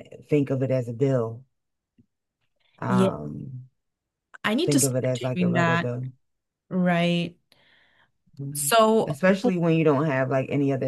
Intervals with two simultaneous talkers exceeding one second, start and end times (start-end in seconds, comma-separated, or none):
4.7-5.9